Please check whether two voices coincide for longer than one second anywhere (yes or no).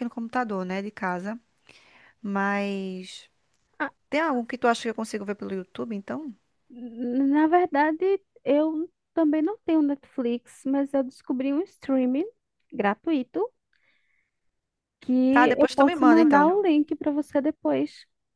yes